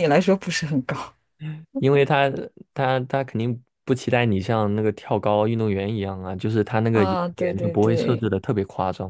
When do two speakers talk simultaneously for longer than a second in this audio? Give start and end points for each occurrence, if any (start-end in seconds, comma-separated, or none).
6.9-8.3